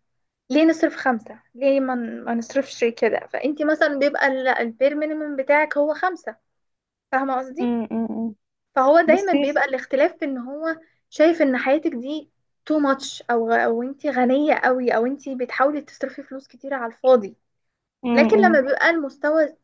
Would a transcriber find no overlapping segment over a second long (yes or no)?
yes